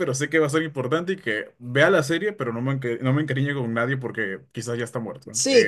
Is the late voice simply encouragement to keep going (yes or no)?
no